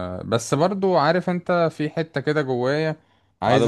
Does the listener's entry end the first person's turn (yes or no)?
no